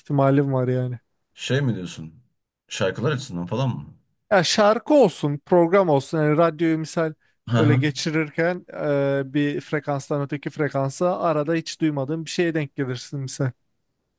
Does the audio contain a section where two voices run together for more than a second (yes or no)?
no